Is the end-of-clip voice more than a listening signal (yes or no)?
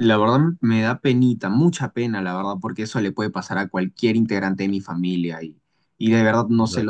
no